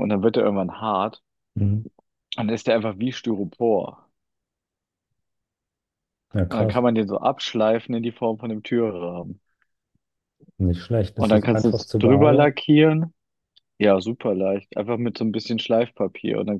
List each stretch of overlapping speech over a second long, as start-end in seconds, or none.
11.1-12.6